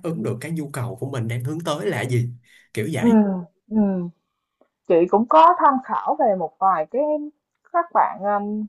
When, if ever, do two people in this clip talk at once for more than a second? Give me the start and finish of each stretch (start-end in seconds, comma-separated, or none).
none